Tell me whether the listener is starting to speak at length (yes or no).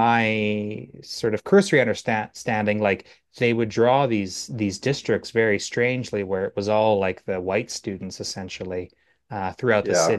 no